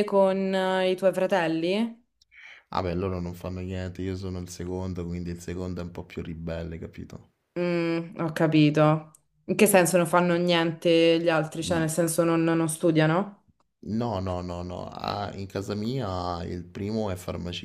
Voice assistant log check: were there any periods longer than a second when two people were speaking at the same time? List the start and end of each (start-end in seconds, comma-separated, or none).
none